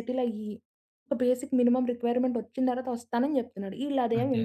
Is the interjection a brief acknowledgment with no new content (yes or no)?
yes